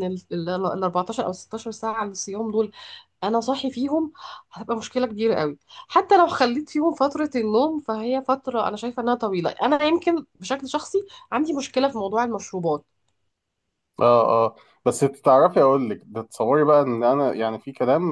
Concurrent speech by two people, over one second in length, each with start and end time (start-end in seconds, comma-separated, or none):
none